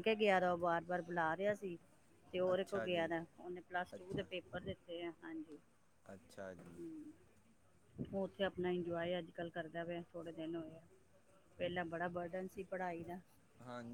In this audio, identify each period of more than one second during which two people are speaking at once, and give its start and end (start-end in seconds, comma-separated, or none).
none